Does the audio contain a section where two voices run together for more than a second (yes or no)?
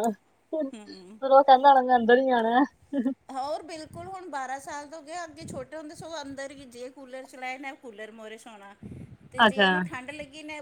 no